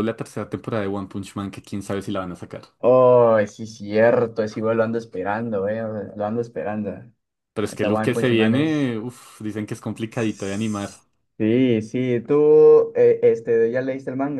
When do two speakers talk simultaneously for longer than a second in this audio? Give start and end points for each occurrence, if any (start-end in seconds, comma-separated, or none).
7.6-8.9